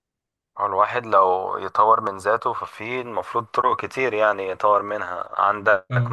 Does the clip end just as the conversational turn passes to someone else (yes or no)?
no